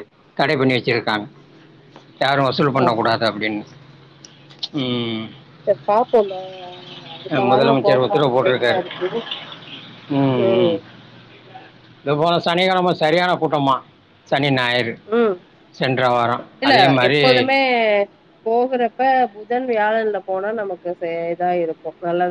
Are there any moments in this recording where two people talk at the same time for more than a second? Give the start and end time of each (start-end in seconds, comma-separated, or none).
7.5-8.8